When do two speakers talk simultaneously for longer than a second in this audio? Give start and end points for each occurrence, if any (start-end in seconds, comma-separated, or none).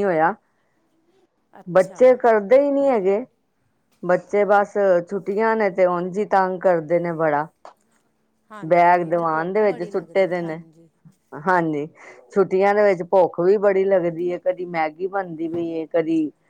8.7-10.6